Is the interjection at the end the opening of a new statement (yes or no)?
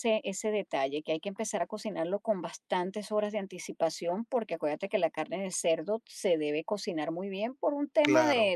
no